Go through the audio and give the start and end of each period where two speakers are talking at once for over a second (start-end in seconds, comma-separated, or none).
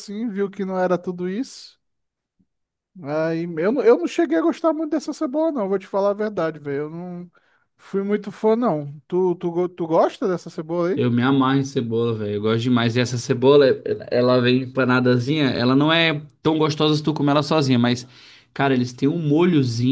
none